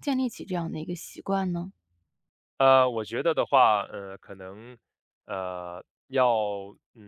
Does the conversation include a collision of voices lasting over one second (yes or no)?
no